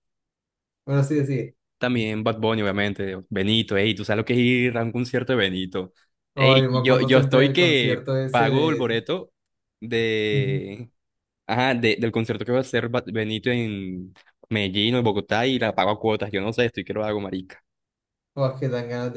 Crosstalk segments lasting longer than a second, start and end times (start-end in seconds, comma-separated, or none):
6.3-8.9